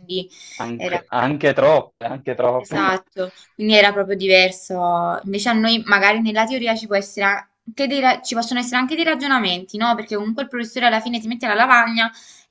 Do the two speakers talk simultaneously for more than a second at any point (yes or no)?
no